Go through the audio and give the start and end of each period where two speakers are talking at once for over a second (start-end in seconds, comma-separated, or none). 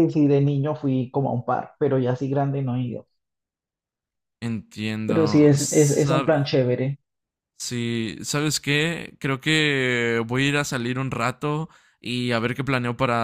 5.0-6.5